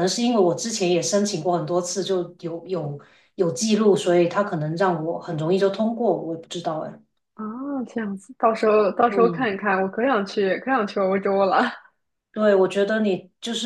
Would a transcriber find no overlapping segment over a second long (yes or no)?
yes